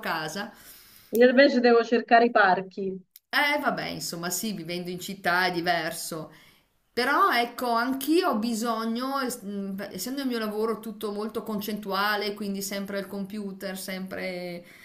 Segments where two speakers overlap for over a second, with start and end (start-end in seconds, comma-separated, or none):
none